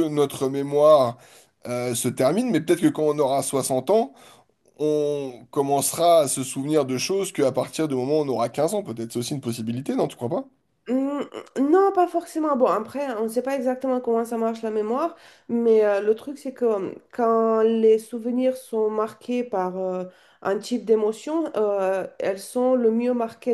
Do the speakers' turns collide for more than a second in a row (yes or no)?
no